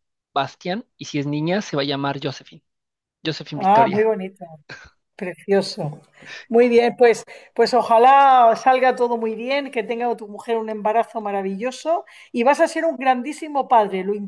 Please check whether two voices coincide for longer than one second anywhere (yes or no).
no